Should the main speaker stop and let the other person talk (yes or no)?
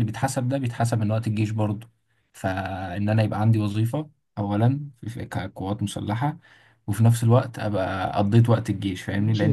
yes